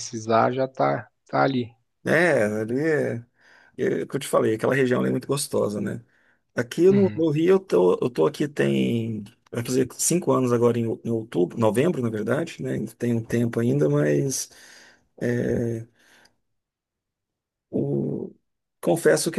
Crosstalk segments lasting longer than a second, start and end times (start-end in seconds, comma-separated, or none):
none